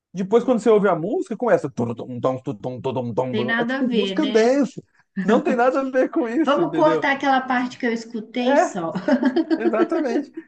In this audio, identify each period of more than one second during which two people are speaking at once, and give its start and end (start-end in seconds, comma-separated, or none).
3.3-4.6